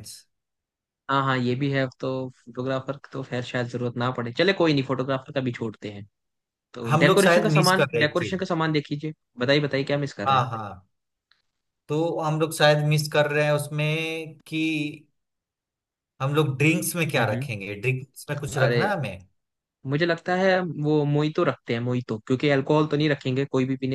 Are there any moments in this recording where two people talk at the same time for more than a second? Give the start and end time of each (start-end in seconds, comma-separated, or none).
6.9-8.4